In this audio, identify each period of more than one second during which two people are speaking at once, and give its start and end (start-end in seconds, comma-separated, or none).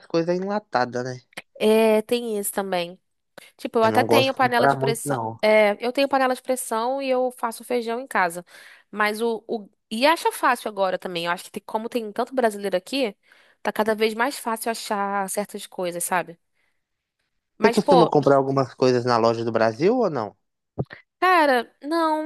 3.8-5.4